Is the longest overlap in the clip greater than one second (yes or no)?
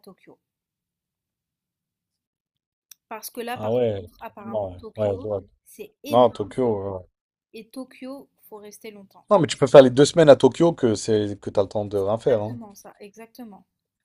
yes